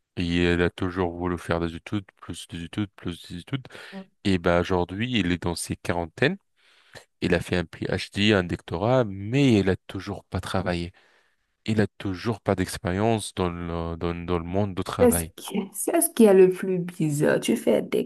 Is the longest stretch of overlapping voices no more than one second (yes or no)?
yes